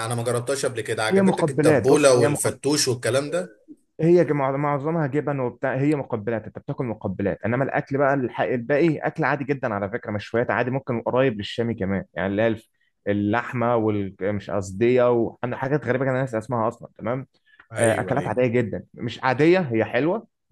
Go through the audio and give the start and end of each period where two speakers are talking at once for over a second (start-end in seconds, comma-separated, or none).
1.1-2.6